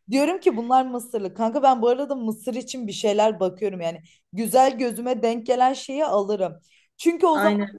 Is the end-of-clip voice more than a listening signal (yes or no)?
no